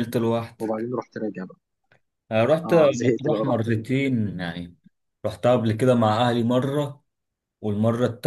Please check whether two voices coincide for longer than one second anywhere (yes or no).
yes